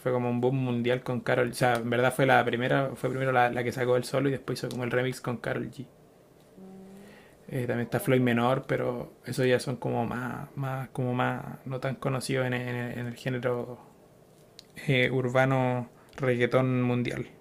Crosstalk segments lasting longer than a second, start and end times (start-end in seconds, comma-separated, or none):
7.5-8.9